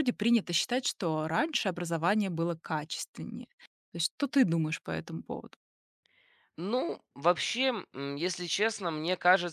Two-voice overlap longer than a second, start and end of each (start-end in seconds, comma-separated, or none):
none